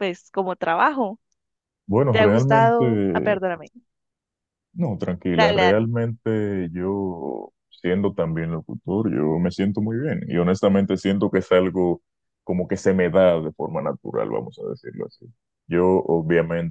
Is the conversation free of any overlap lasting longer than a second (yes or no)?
no